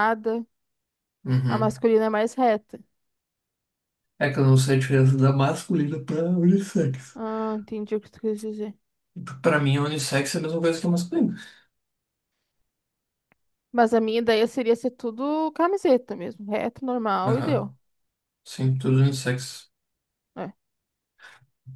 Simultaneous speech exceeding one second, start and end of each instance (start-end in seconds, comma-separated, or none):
none